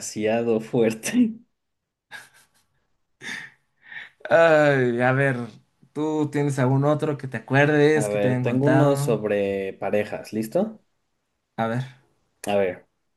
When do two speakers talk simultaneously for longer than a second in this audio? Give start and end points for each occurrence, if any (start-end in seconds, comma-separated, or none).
7.9-9.2